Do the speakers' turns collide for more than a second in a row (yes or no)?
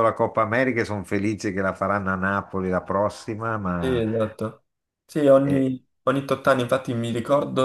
no